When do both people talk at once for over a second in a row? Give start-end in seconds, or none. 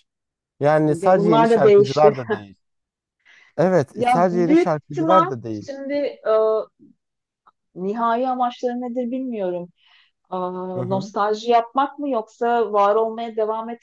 0.8-2.1, 4.0-5.7